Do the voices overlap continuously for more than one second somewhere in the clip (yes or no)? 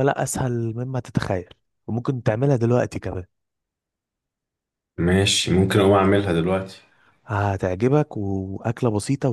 no